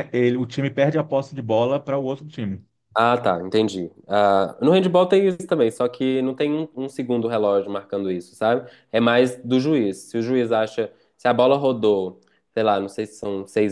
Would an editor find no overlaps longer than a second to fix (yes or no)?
yes